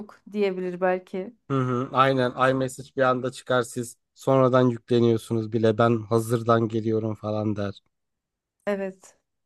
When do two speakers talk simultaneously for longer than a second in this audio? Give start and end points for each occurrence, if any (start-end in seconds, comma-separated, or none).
none